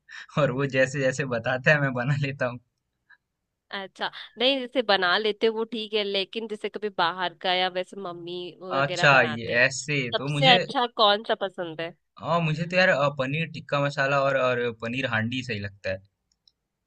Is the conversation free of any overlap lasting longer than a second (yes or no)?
no